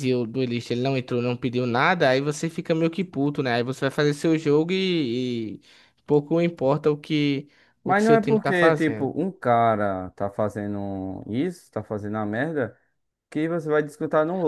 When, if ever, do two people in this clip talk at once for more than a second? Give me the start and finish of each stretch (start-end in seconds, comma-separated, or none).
7.8-9.1